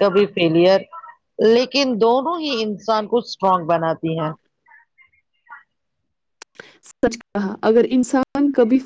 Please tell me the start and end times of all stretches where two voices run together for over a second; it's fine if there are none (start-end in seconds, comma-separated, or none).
none